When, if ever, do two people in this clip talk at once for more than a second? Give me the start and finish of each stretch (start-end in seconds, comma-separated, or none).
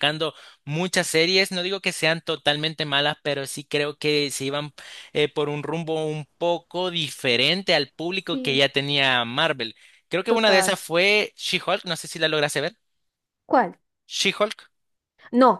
none